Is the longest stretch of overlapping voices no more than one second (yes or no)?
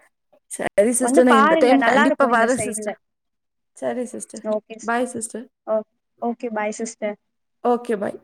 no